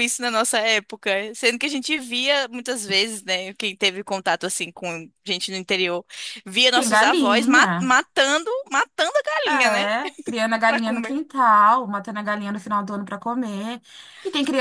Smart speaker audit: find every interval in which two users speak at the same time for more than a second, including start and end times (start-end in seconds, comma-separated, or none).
6.7-7.9